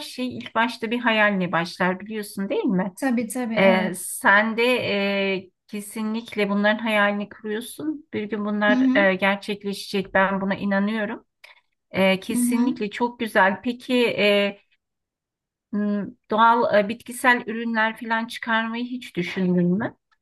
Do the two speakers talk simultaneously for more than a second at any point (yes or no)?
no